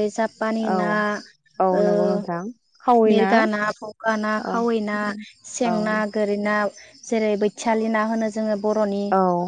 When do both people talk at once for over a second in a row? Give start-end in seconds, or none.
none